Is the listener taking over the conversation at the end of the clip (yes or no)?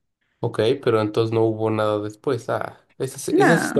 no